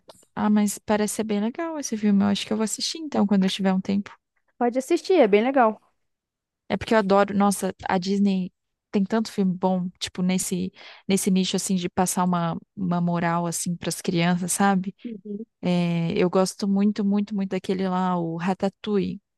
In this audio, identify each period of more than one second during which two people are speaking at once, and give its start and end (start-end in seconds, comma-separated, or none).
none